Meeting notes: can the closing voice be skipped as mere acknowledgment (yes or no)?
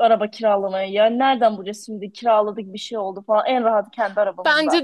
no